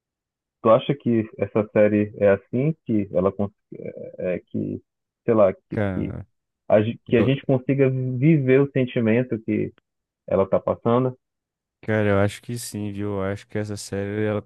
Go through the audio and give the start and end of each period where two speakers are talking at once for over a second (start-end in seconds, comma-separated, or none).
none